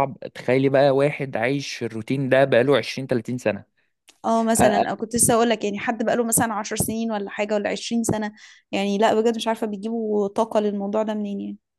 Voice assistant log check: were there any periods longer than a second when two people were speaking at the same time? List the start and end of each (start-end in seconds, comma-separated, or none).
none